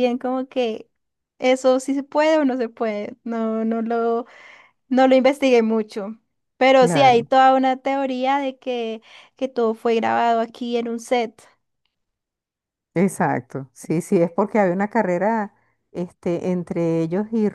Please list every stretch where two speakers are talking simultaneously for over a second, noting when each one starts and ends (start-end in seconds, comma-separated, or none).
none